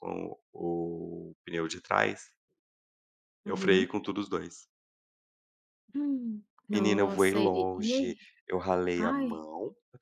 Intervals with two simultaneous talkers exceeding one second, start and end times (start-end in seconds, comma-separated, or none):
6.7-8.2